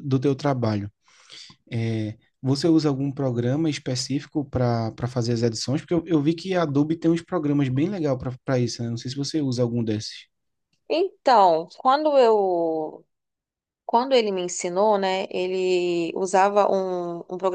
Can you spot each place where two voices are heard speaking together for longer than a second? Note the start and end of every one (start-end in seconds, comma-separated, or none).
none